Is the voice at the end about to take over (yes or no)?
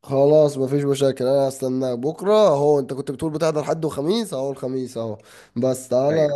no